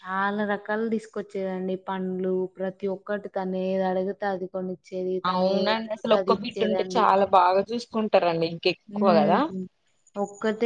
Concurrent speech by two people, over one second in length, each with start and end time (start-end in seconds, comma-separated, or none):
5.3-7.0